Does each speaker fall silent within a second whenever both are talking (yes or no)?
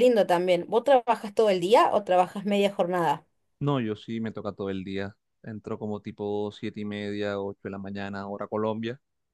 yes